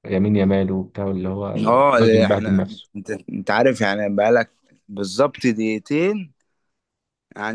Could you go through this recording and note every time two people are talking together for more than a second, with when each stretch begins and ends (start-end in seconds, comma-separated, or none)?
1.5-2.9